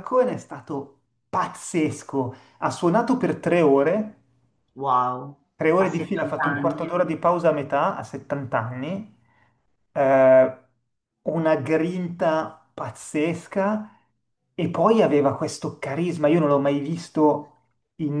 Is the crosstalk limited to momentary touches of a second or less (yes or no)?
no